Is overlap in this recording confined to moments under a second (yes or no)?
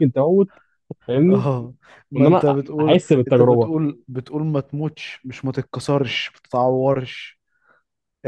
no